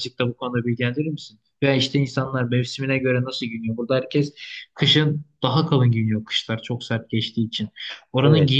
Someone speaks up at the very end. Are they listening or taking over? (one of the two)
listening